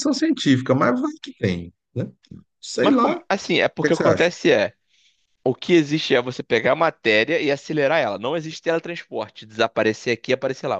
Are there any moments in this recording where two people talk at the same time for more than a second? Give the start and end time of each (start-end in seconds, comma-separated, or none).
none